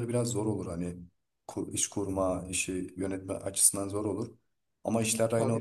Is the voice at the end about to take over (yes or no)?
no